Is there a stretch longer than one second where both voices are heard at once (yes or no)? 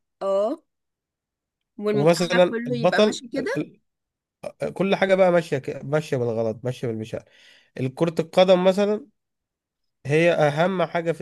yes